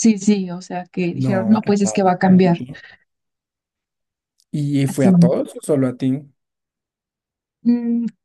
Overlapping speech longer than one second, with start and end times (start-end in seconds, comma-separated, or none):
1.1-2.6